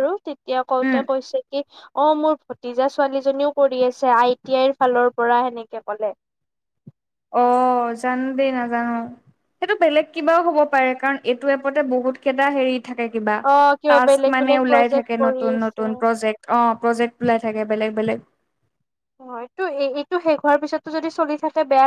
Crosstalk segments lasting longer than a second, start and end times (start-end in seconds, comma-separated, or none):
13.9-15.9